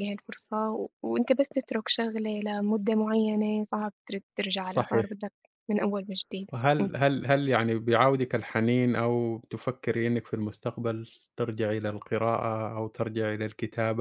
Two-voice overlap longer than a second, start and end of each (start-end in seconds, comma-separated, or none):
none